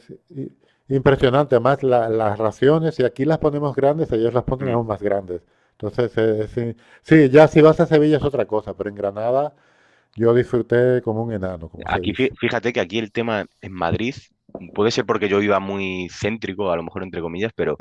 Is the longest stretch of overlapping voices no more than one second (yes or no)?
yes